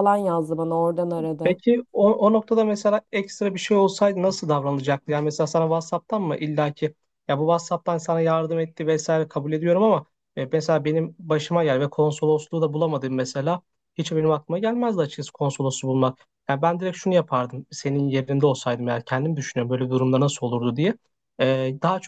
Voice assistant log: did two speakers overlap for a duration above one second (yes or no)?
no